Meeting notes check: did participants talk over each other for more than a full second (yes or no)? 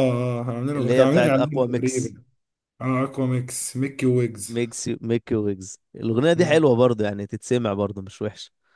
yes